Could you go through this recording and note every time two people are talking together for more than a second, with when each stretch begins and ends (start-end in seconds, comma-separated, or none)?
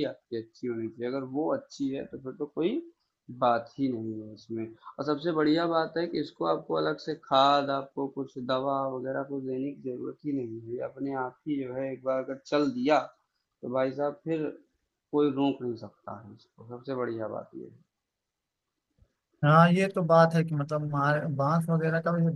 none